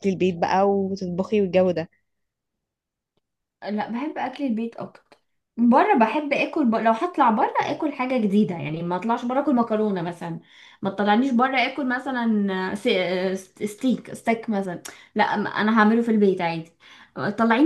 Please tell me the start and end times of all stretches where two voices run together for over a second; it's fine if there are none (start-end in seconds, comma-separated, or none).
none